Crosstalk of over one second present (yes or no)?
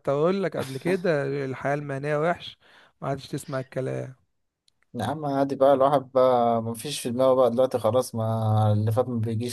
no